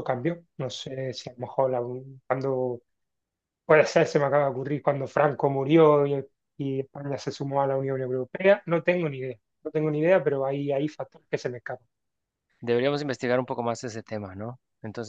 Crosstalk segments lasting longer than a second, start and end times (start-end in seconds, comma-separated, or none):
none